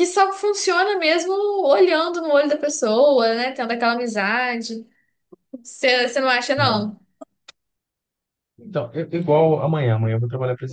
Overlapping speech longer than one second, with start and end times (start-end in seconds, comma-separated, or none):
none